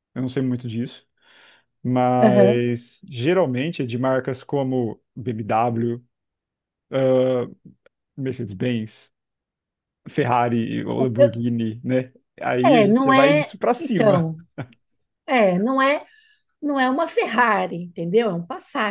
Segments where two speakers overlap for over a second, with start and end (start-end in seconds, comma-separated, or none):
12.6-14.3